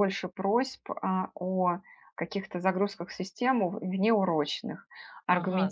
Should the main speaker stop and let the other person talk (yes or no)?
yes